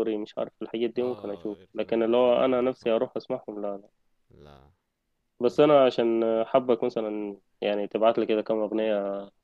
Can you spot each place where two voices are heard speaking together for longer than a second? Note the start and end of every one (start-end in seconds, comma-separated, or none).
0.9-2.9